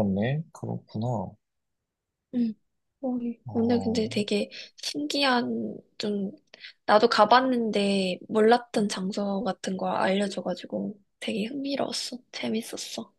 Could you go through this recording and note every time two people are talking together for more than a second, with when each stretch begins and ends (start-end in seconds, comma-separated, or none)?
none